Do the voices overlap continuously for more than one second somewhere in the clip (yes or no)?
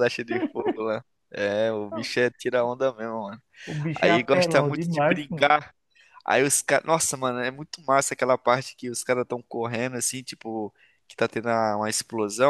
yes